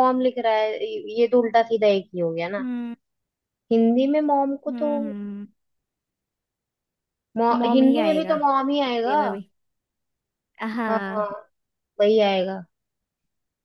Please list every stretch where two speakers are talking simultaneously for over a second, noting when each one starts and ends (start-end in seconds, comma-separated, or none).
7.5-9.2